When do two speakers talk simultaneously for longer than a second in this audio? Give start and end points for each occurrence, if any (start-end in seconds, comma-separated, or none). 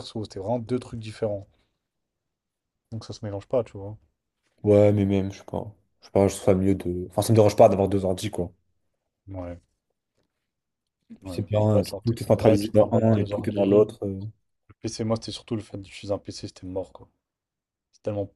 11.2-13.9